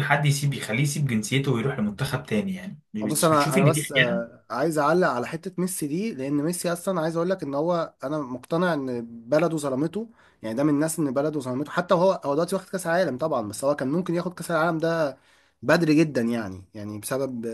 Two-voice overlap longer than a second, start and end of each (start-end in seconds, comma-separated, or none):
3.0-4.4